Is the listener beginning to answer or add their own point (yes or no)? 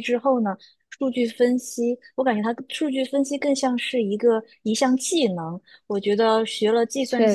no